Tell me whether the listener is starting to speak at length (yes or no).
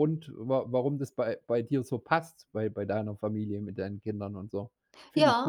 yes